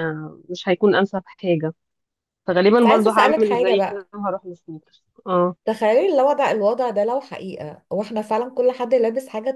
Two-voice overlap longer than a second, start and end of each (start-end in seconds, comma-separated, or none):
2.8-4.1